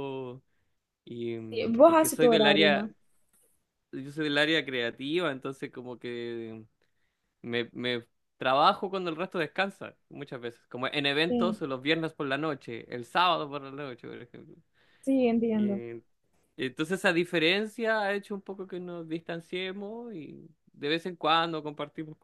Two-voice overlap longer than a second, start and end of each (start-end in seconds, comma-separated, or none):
1.5-2.9